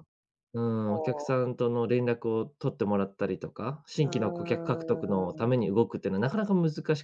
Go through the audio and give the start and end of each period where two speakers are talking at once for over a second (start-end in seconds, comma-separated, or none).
4.0-5.6